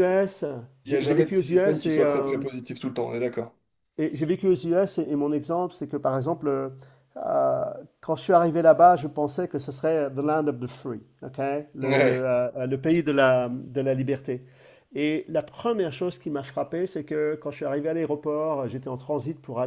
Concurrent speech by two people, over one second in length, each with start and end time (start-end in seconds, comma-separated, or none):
0.9-2.4